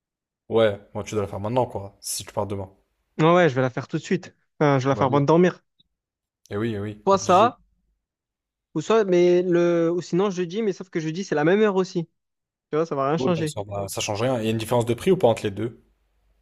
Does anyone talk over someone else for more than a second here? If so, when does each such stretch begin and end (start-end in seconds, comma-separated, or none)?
none